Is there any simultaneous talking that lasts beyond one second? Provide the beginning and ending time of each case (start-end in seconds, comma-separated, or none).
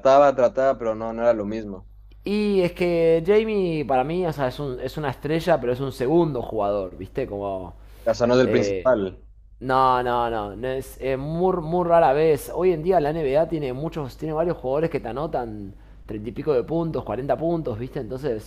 none